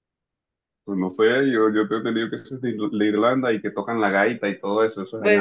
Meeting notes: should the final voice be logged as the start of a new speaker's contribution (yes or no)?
yes